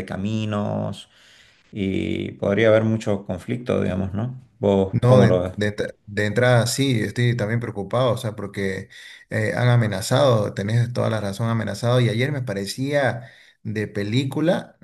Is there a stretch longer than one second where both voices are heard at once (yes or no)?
no